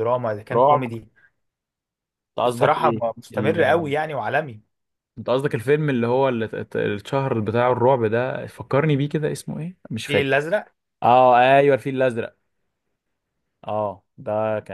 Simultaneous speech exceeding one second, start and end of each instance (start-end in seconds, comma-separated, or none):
2.5-3.9